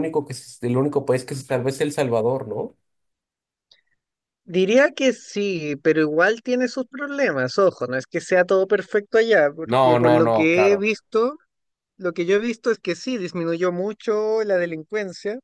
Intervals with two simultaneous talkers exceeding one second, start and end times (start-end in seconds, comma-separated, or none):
9.7-10.9